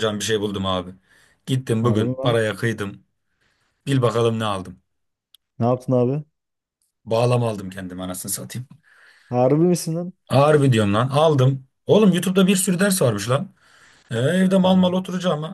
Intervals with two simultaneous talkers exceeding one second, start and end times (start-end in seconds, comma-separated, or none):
none